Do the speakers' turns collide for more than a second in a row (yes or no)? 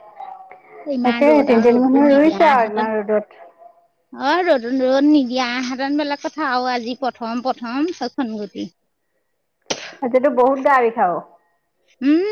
yes